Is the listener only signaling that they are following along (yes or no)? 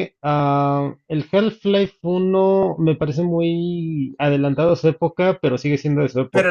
no